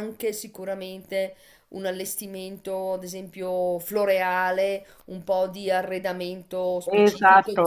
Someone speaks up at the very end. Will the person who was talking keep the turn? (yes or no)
yes